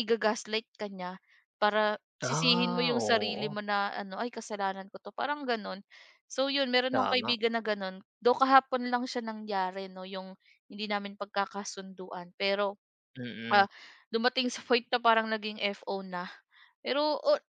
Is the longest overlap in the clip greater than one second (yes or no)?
yes